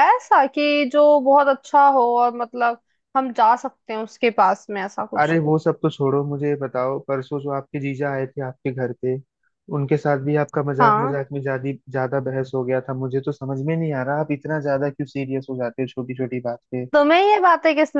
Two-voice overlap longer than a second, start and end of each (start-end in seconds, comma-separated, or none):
none